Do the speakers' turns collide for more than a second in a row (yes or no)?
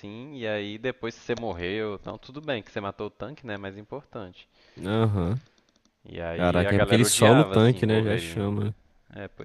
yes